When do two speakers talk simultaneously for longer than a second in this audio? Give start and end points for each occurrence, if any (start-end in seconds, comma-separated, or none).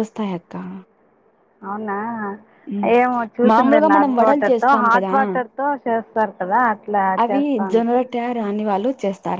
3.5-5.1